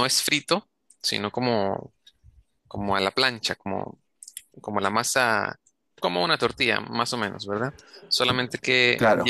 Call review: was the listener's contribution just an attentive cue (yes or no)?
yes